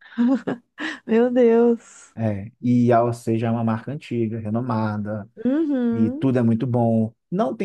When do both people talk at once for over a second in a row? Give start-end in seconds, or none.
none